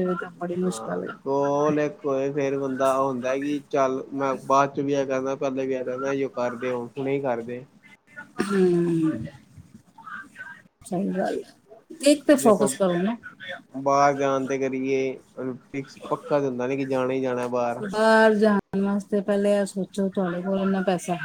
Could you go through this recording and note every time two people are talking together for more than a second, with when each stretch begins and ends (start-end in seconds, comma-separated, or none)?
none